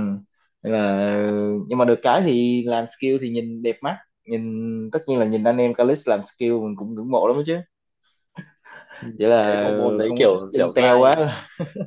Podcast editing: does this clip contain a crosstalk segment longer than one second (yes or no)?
yes